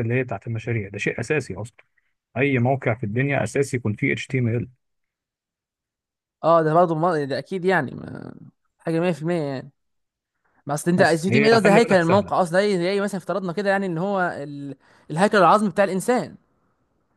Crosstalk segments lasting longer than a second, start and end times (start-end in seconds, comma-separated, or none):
11.0-12.3